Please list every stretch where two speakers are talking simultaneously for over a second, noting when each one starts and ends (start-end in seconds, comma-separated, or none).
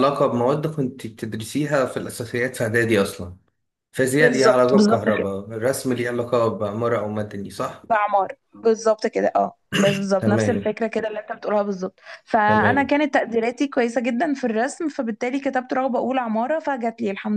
4.2-5.4